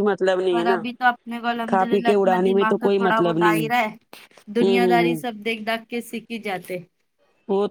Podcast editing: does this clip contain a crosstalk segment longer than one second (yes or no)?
yes